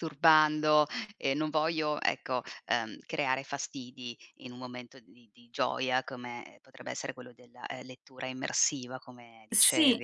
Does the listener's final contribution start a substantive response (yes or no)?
yes